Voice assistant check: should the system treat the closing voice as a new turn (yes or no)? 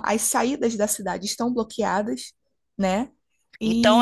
yes